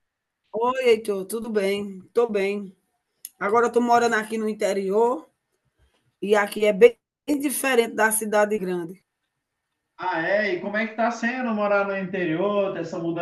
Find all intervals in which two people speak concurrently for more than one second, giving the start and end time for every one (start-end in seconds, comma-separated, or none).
none